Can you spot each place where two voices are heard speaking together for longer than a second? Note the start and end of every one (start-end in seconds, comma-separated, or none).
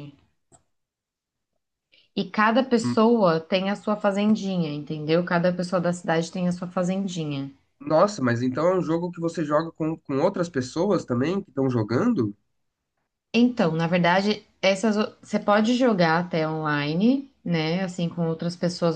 none